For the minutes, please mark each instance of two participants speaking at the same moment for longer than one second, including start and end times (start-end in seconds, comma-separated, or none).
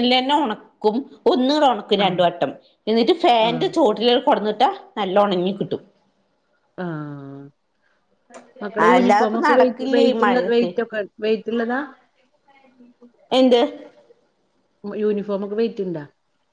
8.9-10.7